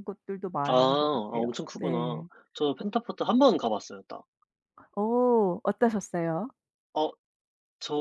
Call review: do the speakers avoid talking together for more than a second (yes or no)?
no